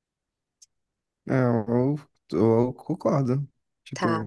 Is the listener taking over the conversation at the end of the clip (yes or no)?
no